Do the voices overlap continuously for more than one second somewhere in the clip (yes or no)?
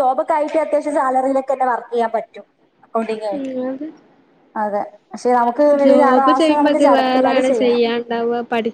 yes